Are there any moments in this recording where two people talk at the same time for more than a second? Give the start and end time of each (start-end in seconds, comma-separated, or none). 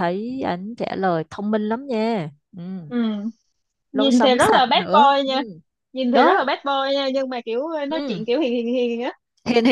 3.9-5.4